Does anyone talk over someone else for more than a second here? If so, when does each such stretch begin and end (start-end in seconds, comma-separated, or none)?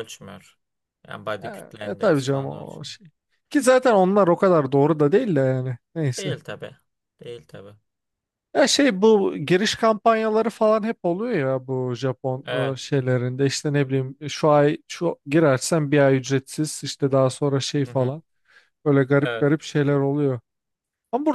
1.4-2.9